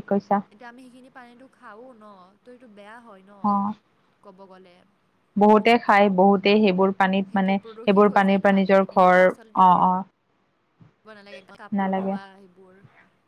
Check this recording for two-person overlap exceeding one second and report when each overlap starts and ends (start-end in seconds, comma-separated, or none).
7.3-9.6